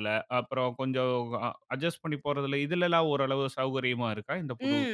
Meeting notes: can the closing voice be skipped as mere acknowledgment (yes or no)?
no